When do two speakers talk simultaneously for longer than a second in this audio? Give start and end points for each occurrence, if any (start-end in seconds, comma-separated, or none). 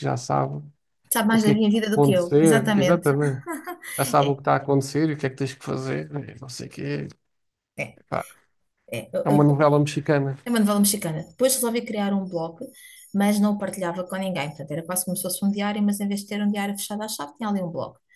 1.3-3.1